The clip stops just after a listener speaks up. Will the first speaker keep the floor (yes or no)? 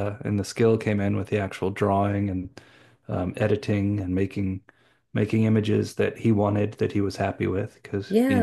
no